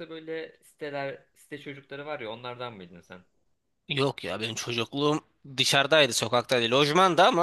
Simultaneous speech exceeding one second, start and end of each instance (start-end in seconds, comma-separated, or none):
none